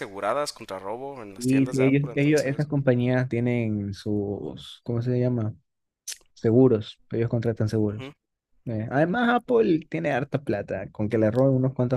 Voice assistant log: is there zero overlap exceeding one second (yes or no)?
no